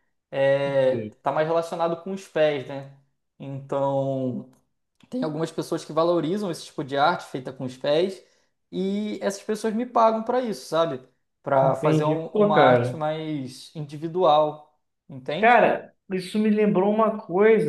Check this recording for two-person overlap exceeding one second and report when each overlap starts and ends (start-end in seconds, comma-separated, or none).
11.6-13.0